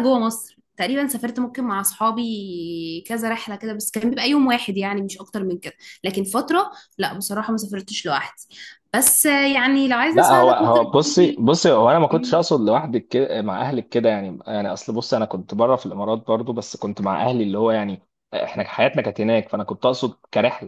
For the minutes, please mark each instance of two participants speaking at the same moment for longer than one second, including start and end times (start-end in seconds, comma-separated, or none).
10.1-11.4